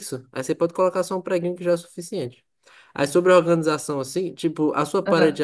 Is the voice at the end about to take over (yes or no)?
no